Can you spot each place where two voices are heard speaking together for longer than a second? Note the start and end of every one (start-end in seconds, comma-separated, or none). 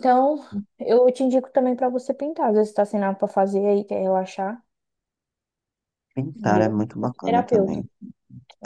6.3-7.8